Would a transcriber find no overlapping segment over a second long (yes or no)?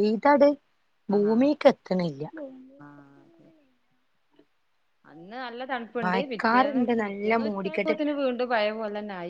no